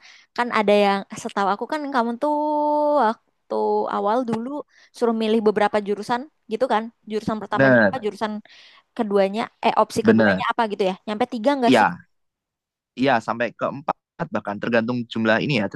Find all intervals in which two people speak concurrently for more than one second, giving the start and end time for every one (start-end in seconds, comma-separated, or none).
none